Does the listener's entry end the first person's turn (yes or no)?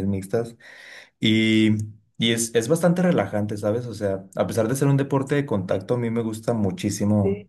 no